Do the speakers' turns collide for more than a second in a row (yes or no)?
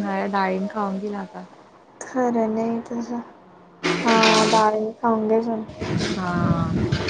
no